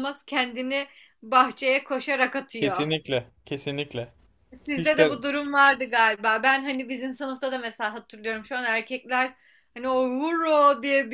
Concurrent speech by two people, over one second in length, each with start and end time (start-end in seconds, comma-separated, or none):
none